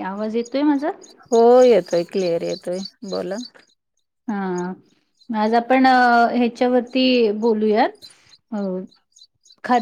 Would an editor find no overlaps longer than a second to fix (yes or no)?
yes